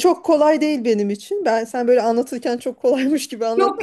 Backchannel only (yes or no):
no